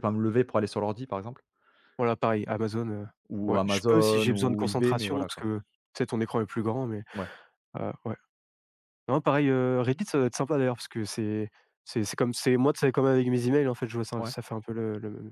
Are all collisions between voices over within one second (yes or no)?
no